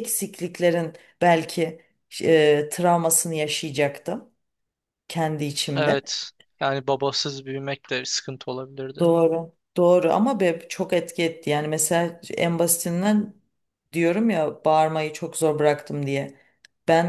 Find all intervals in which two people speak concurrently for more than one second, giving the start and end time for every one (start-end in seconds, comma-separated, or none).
none